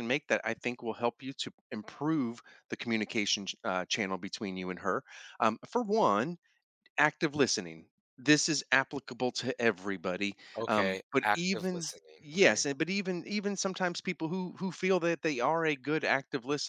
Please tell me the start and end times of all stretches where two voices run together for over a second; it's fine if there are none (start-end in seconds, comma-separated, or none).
10.6-12.7